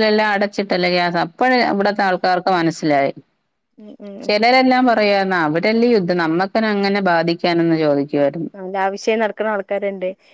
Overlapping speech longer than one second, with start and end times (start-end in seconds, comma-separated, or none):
none